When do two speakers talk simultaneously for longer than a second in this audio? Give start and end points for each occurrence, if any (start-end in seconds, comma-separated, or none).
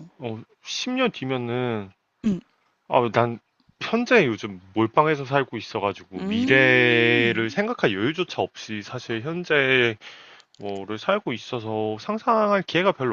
6.2-7.5